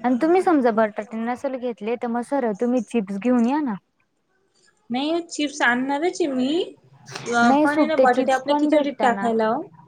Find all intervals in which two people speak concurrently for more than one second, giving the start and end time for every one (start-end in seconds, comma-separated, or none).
7.4-9.3